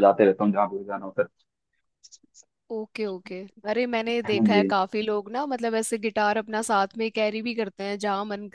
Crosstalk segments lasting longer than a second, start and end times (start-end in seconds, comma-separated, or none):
none